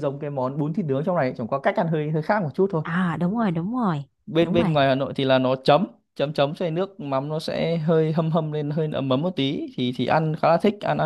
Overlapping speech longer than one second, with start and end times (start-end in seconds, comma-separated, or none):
none